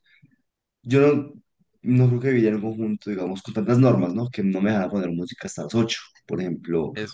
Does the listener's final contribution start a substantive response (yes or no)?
no